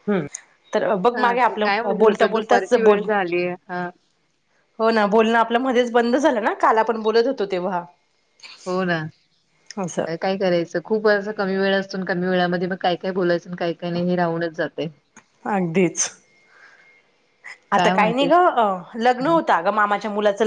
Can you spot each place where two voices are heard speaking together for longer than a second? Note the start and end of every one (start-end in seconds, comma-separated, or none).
1.1-3.1